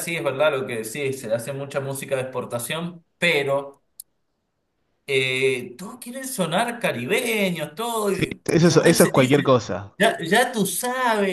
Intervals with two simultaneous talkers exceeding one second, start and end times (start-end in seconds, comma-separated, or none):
8.1-9.6